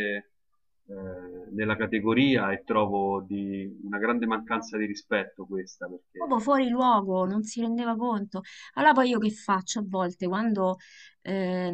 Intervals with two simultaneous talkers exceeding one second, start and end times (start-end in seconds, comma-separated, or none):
none